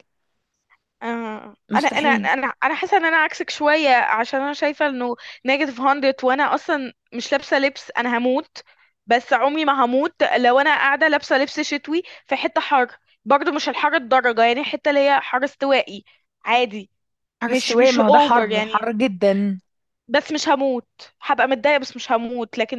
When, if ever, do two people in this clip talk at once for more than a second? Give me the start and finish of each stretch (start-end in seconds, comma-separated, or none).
17.5-18.9